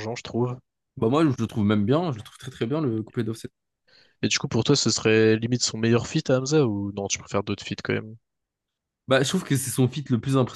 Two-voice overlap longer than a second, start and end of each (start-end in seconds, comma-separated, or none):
none